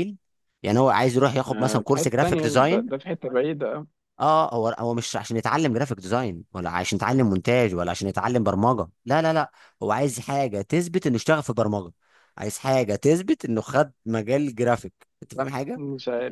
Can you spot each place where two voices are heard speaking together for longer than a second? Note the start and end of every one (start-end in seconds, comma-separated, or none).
1.5-2.9